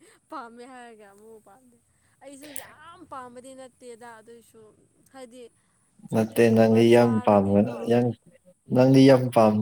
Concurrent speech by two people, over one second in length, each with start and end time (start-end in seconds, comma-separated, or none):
6.1-7.7